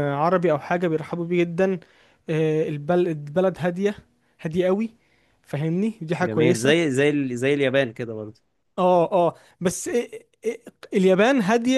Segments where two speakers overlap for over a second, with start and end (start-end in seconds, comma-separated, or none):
none